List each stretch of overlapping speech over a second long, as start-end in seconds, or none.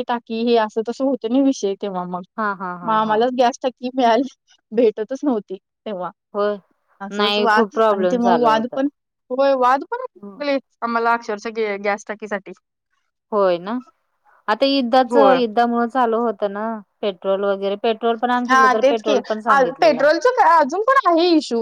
7.2-8.7